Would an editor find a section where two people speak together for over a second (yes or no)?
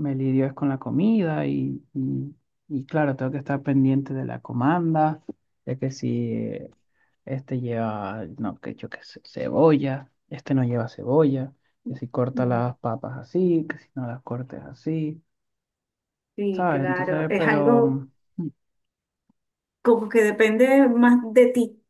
yes